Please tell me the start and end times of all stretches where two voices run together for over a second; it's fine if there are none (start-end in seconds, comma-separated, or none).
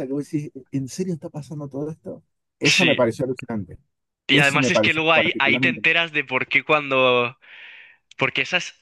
4.3-5.8